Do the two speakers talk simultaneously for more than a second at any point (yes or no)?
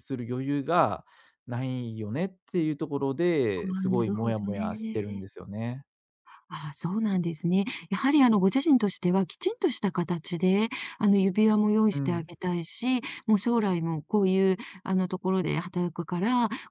yes